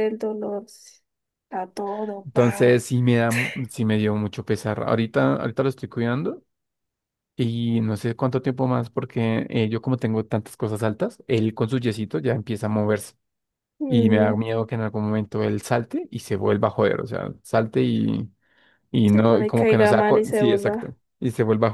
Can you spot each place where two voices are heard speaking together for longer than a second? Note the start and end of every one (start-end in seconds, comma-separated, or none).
19.1-20.9